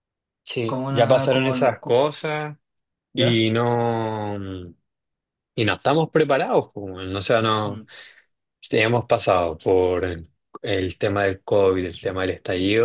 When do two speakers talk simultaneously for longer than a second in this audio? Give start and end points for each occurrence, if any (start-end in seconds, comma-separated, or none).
0.6-2.0